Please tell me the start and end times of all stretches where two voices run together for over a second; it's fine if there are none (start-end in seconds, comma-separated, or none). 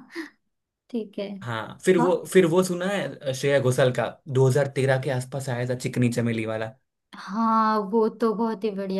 none